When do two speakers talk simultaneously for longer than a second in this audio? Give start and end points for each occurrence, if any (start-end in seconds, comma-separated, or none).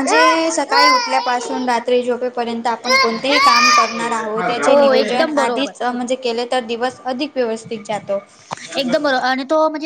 4.0-5.7